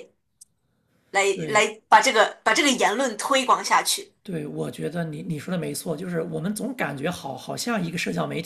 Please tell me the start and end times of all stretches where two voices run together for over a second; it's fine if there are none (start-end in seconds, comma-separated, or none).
none